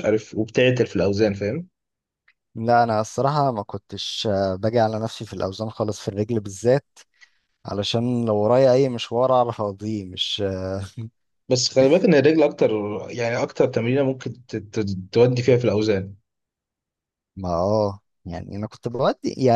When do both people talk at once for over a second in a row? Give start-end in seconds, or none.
none